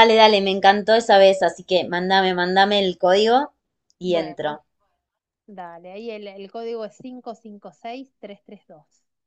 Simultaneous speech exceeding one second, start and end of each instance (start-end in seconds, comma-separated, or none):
none